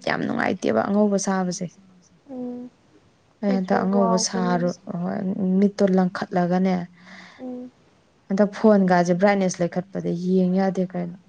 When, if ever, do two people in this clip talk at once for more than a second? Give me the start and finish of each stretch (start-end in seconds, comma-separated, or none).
3.5-4.7